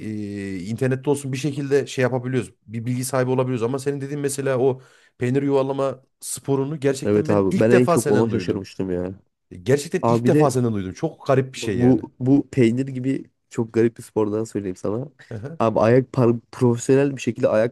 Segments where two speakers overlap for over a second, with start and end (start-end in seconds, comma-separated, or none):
7.0-8.7